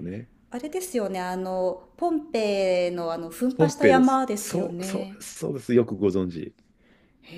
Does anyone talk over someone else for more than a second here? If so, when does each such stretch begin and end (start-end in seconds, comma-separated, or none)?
3.6-5.2